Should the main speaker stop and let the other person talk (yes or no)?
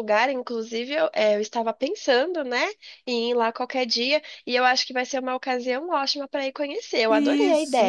yes